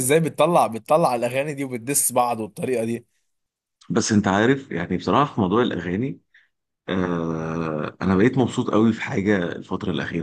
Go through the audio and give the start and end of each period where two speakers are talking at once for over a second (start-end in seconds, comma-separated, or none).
none